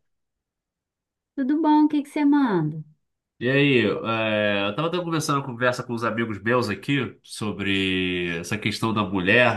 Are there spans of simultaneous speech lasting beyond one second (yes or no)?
no